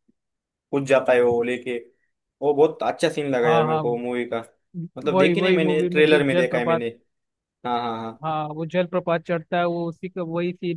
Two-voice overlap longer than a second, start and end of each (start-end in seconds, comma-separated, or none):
5.1-6.8